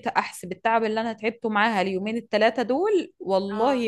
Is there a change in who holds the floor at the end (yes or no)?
no